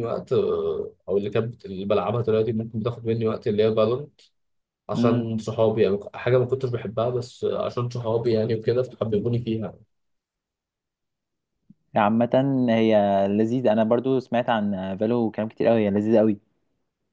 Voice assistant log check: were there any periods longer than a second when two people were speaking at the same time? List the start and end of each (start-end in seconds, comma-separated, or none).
none